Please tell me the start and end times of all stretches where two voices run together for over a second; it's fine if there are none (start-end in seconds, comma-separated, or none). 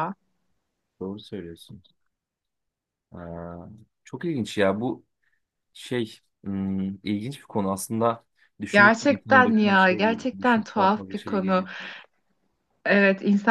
8.7-11.7